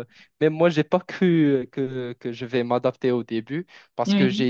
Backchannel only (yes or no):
yes